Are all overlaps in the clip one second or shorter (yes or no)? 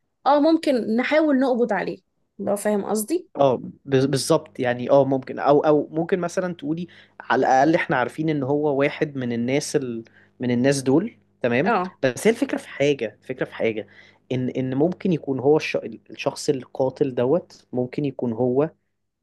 yes